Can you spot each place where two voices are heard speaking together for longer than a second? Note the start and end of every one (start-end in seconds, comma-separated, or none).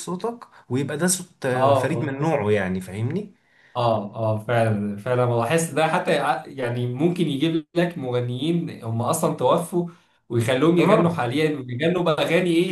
none